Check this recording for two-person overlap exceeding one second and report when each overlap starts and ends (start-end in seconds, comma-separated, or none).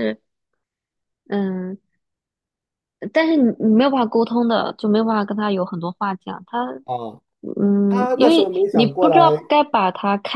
7.9-9.4